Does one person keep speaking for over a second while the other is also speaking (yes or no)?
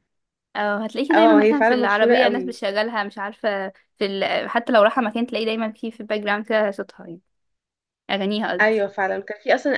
yes